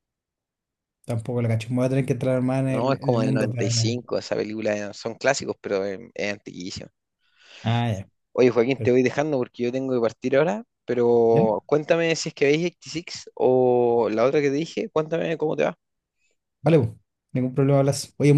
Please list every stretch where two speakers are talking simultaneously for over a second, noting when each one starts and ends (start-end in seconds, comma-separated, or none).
2.7-4.0